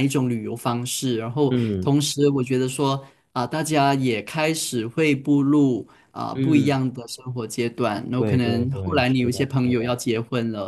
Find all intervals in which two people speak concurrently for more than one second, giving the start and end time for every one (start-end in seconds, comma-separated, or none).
8.2-10.0